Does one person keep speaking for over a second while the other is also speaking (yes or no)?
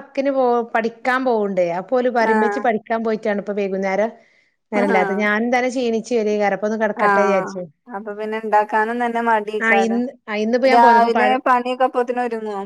no